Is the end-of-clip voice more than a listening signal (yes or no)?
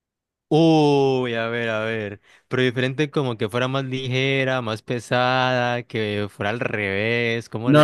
yes